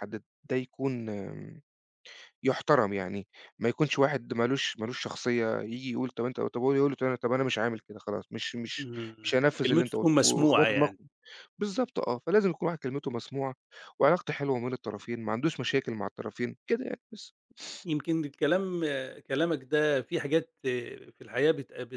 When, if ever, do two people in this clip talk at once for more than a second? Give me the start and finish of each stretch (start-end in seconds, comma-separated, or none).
8.8-11.0